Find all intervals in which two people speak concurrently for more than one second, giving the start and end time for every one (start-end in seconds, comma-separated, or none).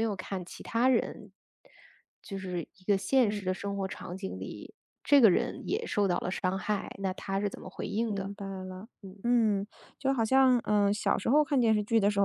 none